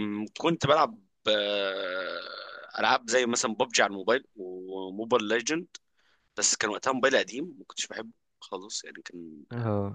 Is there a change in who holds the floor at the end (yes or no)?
yes